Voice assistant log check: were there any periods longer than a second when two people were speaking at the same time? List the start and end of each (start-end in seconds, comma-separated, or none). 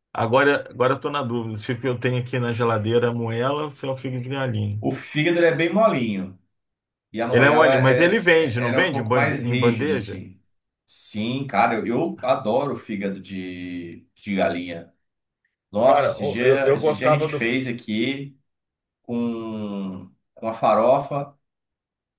7.3-10.2, 15.8-17.6